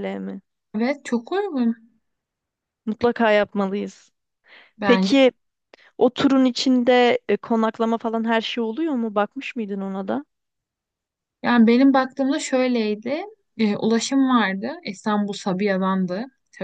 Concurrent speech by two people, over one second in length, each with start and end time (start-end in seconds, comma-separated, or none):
none